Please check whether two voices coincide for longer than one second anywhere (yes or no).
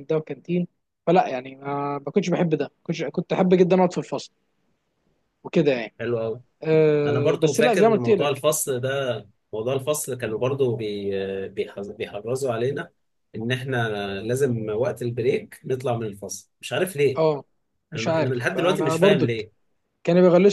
yes